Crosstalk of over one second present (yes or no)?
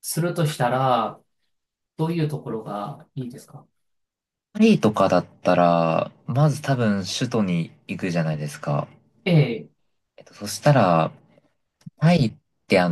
no